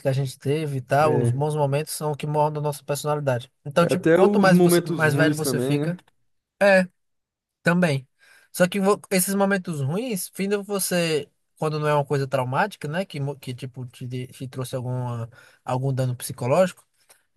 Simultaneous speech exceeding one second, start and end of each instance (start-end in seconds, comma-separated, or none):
3.8-6.0